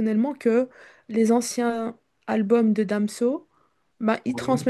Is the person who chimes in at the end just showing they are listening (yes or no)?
yes